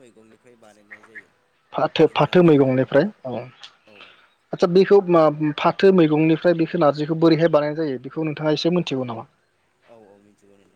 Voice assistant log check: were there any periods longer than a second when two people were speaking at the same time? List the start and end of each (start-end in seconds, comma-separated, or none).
none